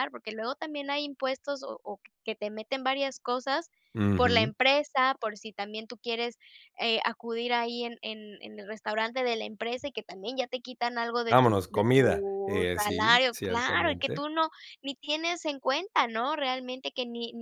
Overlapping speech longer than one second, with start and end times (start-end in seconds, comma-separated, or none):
11.3-14.2